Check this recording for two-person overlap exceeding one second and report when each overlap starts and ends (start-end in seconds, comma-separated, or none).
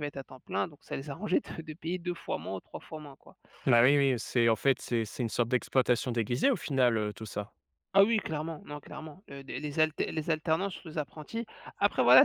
none